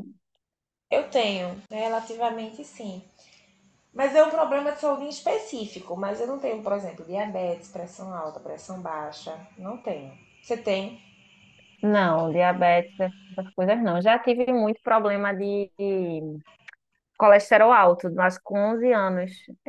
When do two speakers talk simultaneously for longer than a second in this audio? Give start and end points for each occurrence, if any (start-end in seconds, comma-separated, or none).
none